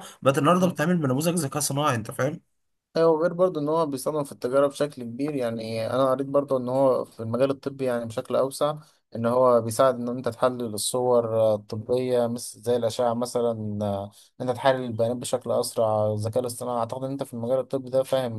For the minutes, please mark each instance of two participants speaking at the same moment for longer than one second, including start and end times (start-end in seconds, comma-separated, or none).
none